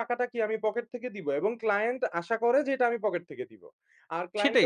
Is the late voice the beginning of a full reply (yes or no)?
yes